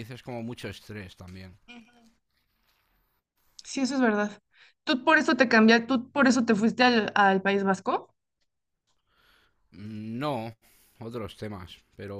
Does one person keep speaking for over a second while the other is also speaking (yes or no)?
no